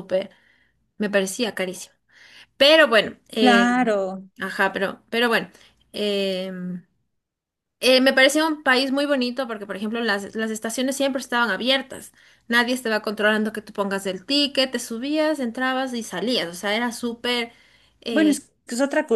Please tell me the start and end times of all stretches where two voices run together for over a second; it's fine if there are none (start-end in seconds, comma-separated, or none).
none